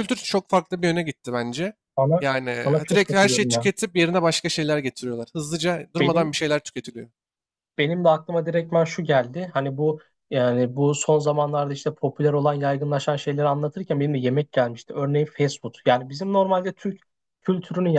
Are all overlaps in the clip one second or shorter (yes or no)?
no